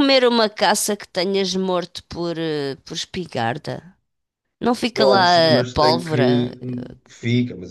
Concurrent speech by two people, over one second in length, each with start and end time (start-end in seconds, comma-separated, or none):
5.0-6.5